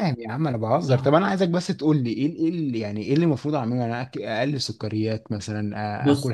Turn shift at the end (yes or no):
no